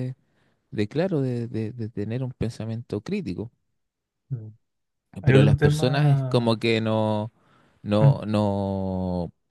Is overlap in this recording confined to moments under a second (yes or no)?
no